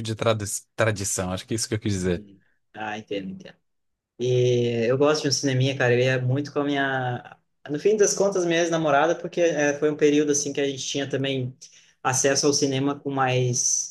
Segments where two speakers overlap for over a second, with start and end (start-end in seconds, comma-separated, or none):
none